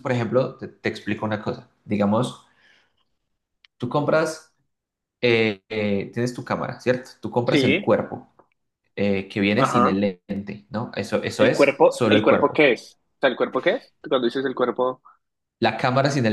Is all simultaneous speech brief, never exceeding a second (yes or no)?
no